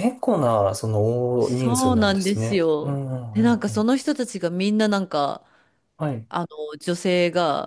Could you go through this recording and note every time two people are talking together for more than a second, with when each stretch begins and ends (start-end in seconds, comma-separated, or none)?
1.4-3.9